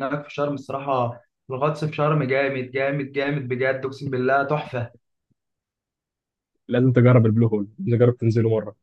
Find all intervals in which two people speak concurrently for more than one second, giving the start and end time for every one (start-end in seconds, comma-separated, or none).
none